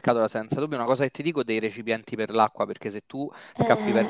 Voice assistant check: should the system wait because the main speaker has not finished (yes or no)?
yes